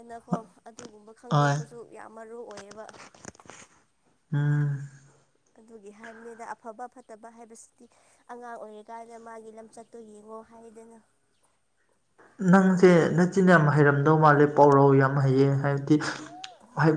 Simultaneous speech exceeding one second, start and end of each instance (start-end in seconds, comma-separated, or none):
none